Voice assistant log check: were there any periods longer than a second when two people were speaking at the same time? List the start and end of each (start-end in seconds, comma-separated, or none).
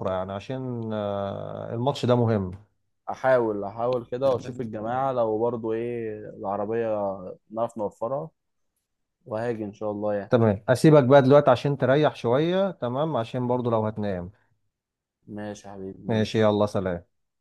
none